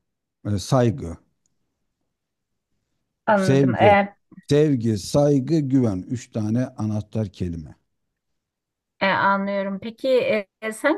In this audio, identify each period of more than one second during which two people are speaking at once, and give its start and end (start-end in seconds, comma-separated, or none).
none